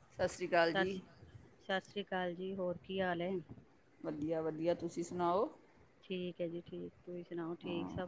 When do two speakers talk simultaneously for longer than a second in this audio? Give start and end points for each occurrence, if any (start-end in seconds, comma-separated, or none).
none